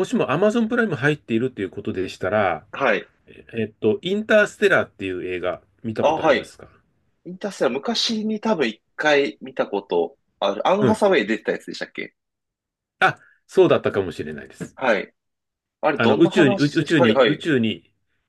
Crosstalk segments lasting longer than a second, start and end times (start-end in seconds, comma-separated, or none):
15.9-17.4